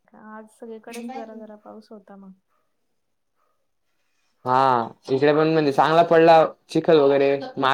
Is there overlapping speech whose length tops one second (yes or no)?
no